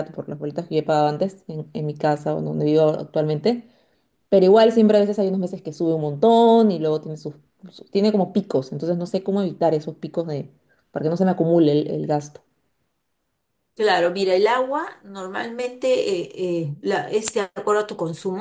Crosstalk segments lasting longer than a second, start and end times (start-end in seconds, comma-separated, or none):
none